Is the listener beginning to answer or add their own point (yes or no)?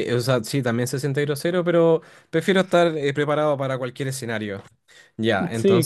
yes